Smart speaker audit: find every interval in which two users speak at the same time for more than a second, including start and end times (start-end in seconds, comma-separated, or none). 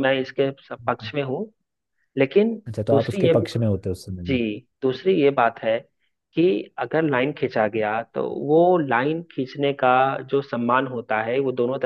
none